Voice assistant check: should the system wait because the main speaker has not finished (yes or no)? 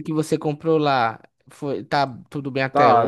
no